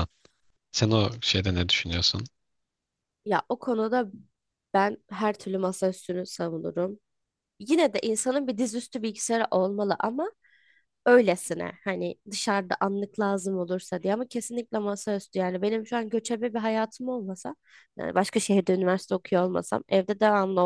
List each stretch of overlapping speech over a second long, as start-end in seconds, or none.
none